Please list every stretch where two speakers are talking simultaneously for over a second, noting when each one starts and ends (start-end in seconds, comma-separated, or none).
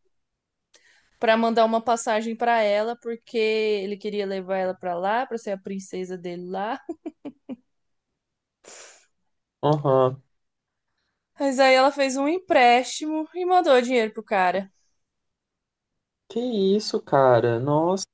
none